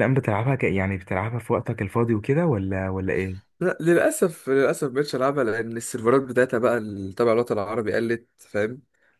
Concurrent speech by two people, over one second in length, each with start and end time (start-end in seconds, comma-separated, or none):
none